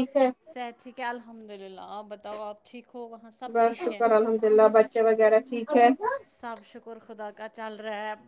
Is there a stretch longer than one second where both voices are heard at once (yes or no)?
no